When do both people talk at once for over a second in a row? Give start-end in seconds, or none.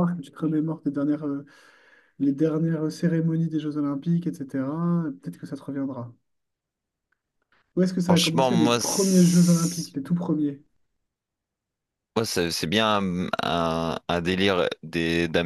8.1-9.9